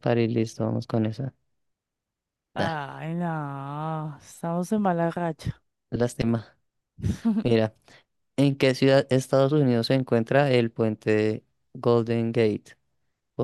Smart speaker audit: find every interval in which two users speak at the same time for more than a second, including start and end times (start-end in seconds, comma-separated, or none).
none